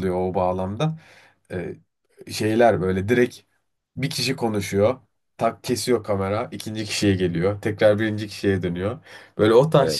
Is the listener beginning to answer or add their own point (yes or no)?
no